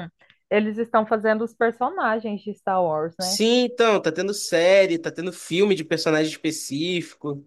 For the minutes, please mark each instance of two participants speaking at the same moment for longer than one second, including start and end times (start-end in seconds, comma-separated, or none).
none